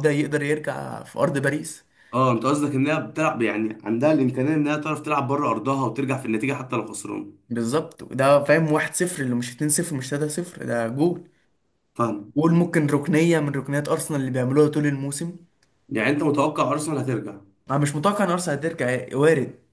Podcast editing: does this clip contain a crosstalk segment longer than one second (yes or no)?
no